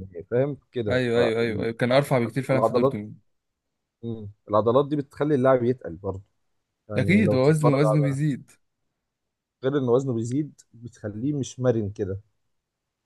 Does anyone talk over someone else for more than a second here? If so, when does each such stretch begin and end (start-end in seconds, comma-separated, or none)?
7.0-8.2